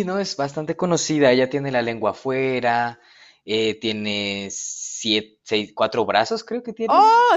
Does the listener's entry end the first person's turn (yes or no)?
yes